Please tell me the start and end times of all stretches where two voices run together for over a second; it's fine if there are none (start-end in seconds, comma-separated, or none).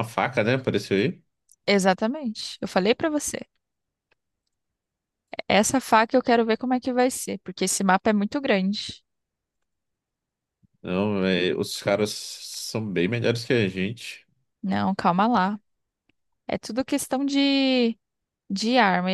none